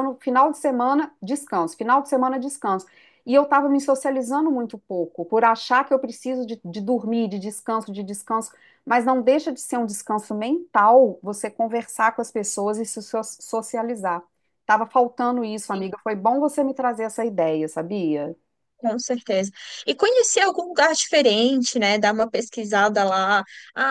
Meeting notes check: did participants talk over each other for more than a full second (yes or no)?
no